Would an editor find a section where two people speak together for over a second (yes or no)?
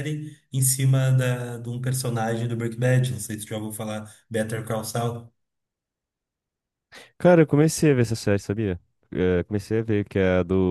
no